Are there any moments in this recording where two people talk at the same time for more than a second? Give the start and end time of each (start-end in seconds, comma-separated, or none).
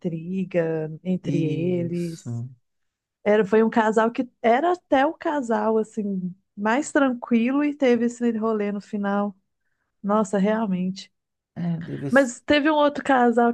1.2-2.4